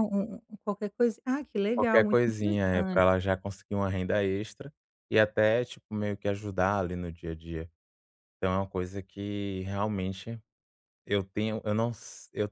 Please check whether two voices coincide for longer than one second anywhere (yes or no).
yes